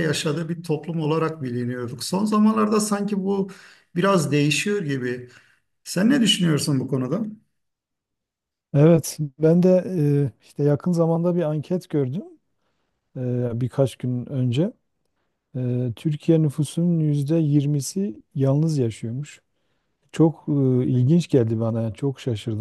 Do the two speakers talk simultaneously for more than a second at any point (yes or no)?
no